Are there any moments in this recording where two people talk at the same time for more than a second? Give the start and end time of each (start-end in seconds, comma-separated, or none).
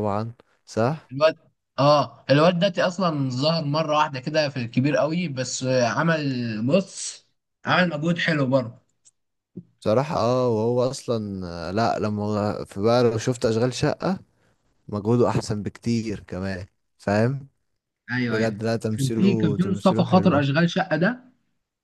18.3-20.5